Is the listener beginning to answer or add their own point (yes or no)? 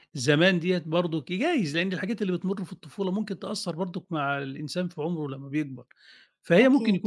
no